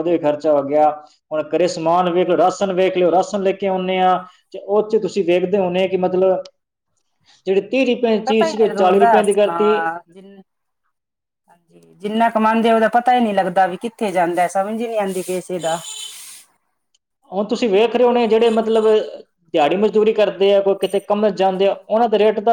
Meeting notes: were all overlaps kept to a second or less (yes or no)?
yes